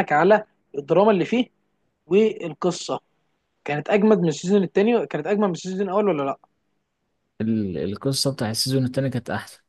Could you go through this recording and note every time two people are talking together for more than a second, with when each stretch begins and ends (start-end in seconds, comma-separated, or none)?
none